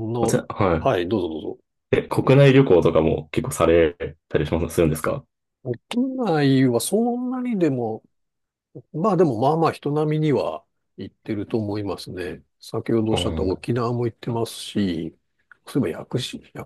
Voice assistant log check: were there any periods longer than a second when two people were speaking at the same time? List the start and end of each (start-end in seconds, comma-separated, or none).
none